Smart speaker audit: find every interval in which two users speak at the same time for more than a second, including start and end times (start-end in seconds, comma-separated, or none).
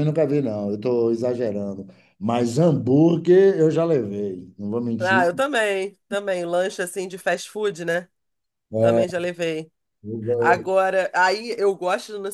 none